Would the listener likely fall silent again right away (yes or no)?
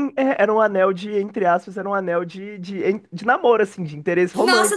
no